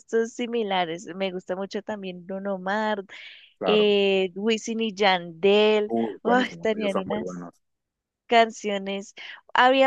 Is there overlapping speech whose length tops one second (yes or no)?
yes